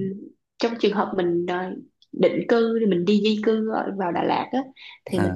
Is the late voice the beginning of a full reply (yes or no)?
no